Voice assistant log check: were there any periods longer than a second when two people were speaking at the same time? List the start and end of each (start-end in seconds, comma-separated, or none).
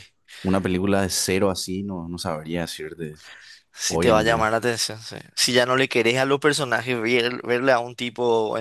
none